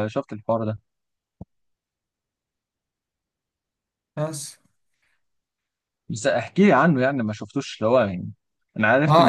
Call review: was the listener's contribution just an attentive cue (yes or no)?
no